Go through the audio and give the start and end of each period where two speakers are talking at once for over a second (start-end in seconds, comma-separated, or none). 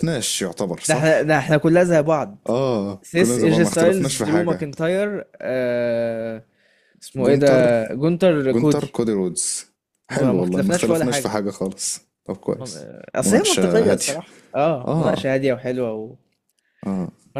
3.0-4.7, 10.1-11.4, 12.6-14.2